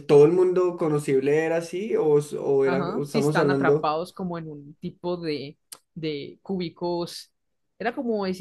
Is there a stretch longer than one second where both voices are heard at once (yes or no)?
yes